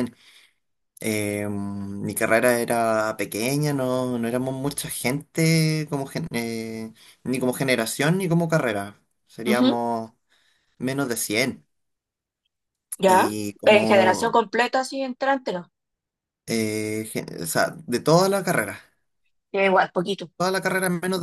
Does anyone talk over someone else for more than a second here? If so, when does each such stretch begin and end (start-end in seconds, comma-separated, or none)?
13.1-14.4